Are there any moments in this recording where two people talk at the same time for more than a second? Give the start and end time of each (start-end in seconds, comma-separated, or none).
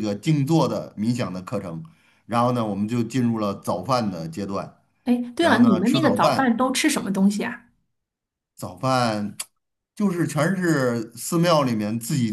5.4-6.6